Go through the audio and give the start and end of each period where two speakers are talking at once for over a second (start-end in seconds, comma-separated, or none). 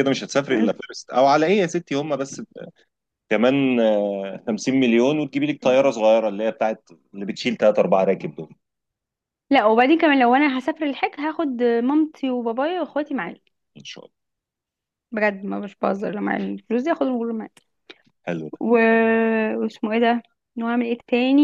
none